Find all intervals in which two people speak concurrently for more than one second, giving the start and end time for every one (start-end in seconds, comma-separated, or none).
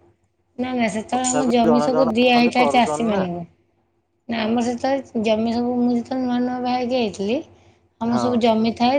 1.1-3.2